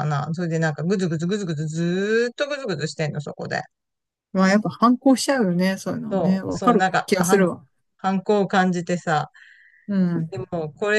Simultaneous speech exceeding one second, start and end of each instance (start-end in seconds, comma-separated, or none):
6.1-7.5